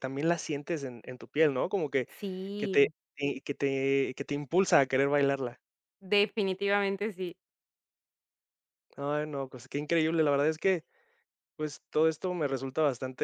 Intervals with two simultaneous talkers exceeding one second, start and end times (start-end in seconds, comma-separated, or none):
none